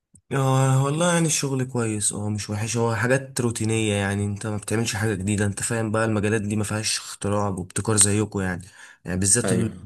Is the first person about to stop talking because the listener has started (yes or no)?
no